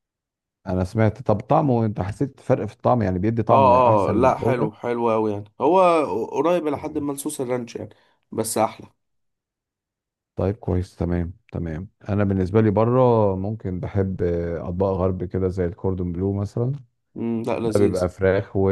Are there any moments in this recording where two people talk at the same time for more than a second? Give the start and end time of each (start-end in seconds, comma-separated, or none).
3.5-4.7